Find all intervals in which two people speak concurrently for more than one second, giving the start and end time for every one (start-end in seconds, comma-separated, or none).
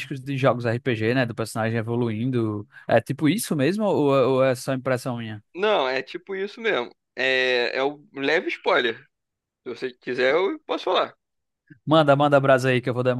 none